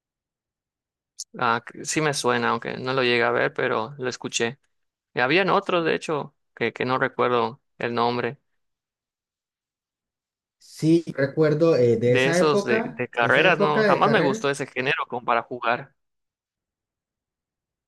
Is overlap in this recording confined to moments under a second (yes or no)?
no